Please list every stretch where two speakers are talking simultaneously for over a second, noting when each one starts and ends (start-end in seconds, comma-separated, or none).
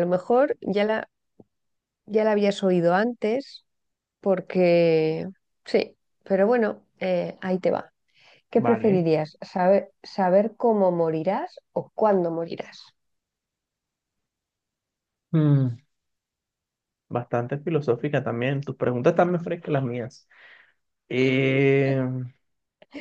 none